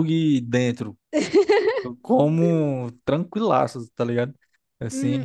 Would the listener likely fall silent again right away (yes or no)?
no